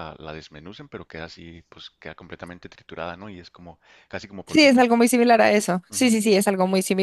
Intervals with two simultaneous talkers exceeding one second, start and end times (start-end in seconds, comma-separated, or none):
none